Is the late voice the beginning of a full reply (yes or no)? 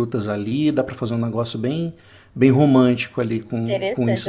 yes